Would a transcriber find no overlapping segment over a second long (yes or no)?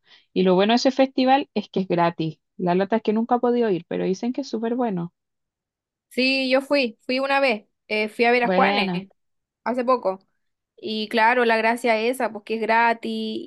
yes